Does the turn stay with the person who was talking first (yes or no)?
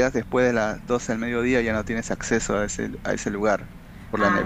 no